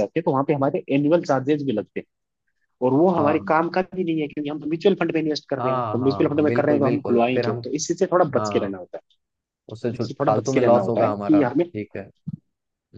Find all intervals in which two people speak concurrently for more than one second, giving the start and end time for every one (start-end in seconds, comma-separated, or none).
5.6-7.6, 10.0-11.7